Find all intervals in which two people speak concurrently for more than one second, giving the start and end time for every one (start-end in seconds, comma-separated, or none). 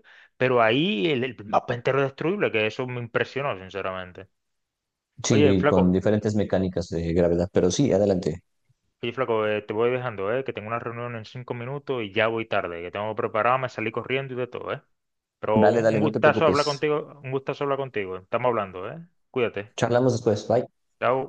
15.5-16.9